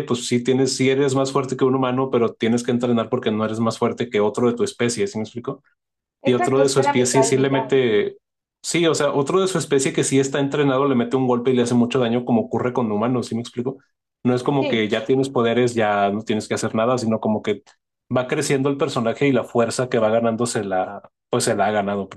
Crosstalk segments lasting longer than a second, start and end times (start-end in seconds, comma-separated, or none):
6.2-7.7